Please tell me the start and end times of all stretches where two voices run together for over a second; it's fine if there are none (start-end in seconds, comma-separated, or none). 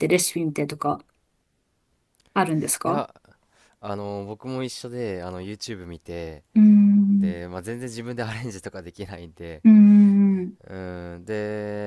none